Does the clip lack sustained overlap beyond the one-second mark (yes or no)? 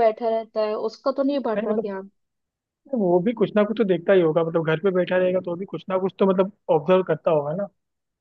yes